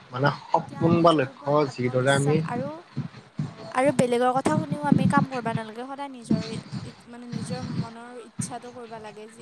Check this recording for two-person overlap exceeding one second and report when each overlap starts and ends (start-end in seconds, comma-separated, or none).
0.6-2.4